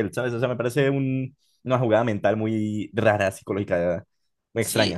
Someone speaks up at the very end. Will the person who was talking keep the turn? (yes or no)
no